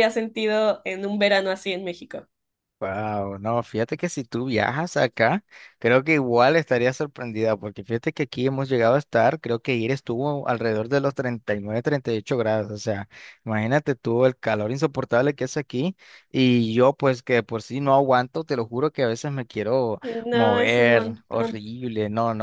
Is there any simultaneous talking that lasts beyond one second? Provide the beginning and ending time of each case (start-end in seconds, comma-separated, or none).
20.3-21.6